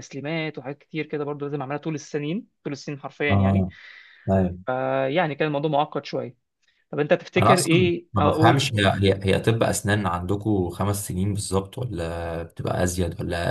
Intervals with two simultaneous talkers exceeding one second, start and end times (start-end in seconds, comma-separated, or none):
7.4-8.8